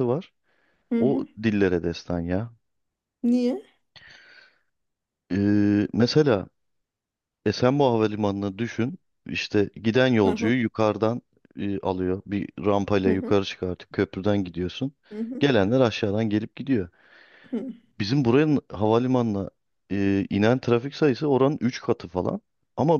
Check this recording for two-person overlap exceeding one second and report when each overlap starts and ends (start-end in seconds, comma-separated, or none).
none